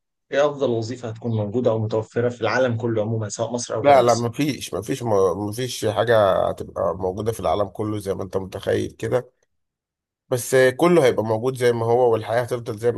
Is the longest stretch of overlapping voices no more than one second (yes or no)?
yes